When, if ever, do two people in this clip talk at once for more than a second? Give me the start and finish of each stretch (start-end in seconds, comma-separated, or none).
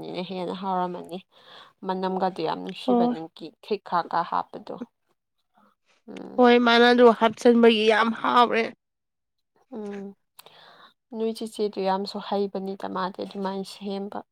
none